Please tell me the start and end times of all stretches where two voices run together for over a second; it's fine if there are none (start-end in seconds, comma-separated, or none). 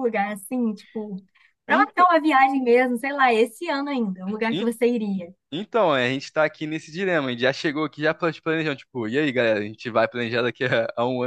none